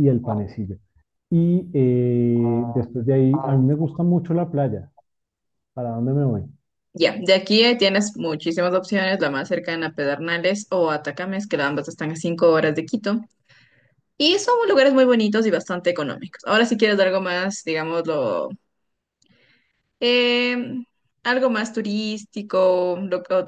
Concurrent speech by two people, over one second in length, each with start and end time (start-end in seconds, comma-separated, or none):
none